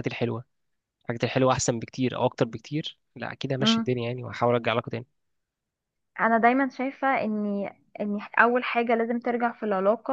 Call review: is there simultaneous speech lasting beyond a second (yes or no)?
no